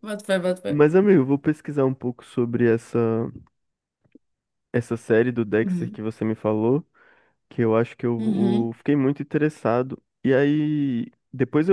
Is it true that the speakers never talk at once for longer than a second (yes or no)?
yes